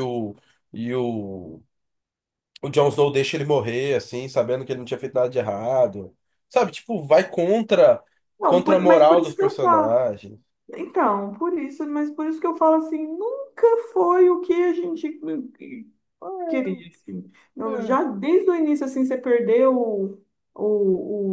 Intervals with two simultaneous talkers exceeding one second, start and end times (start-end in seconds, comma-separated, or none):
8.4-9.9